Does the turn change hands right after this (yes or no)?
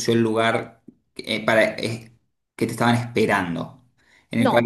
yes